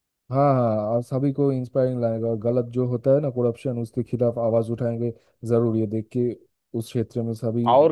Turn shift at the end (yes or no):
yes